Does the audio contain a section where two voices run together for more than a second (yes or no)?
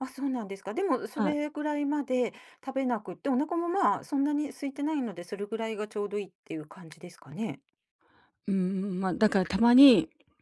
no